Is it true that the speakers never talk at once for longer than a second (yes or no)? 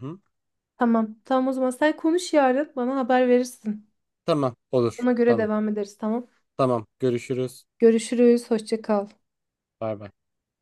yes